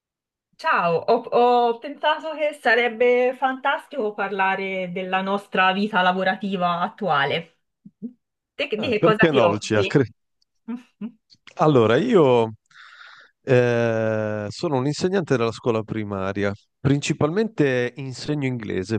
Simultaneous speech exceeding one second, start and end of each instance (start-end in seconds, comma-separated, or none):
8.8-10.1